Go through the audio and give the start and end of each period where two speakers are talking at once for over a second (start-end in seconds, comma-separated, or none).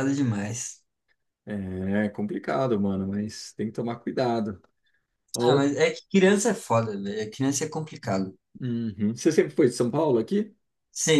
none